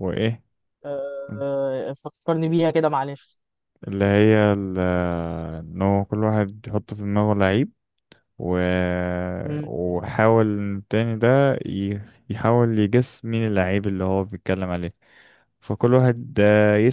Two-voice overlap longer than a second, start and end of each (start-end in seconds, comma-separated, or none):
none